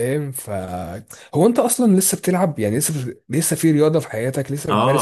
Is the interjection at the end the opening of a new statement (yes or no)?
yes